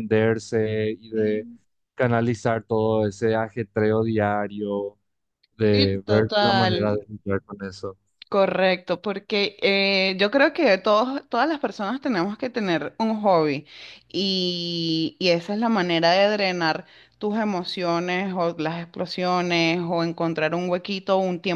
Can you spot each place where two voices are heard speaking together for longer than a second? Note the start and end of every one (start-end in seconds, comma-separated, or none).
5.7-7.0